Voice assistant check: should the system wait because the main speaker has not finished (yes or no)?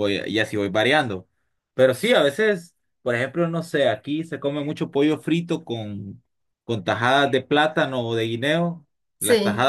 yes